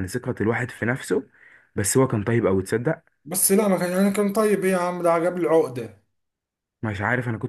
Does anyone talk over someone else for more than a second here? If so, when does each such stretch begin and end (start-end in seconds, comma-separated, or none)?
none